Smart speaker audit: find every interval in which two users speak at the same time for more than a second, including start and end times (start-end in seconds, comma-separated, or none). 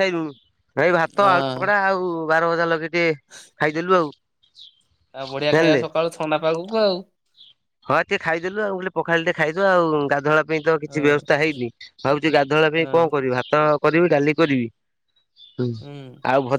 none